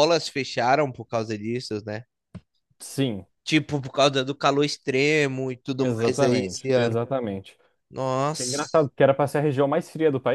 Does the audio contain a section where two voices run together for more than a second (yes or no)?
yes